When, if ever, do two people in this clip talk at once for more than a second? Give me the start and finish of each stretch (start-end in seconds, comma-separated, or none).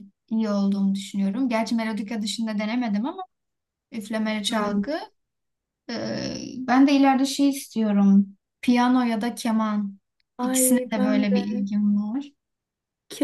10.4-11.7